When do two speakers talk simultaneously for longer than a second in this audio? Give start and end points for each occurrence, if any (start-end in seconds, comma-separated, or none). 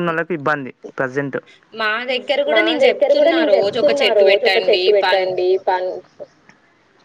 2.5-5.2